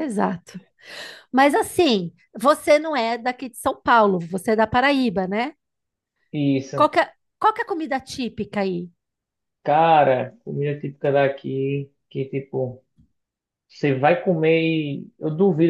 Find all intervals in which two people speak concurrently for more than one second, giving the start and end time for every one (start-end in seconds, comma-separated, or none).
none